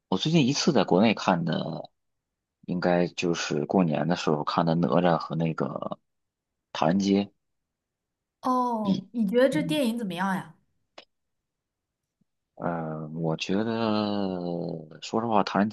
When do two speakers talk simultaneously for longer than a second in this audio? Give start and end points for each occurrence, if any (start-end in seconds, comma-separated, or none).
none